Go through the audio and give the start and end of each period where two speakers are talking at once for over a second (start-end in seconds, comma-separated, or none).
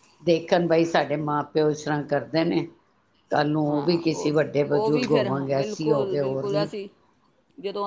4.7-6.7